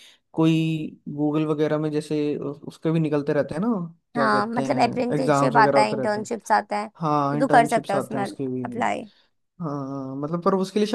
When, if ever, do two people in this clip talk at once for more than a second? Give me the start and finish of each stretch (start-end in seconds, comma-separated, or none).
4.2-6.3, 7.0-8.2